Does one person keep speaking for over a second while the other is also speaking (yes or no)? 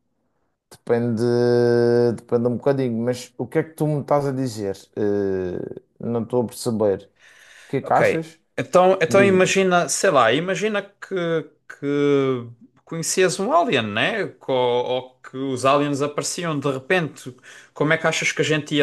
no